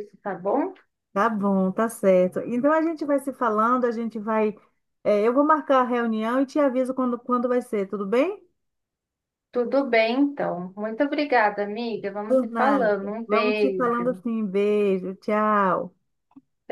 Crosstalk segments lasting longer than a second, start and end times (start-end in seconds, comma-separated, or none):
12.3-14.2